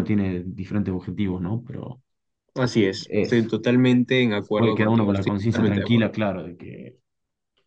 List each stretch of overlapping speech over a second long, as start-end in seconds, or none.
4.5-6.1